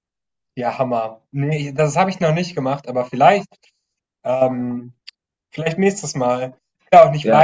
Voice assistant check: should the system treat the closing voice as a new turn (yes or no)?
no